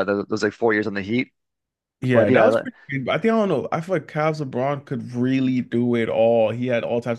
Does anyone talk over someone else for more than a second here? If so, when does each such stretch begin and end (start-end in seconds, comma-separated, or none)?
none